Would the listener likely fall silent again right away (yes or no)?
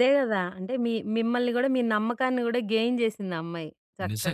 no